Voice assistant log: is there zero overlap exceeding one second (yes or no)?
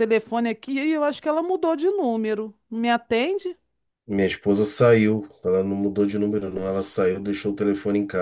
yes